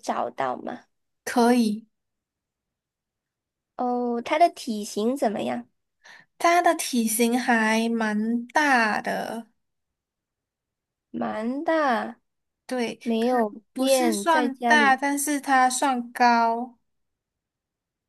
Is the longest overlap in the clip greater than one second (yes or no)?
yes